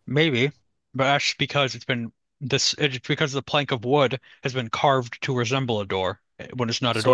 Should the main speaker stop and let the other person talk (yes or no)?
yes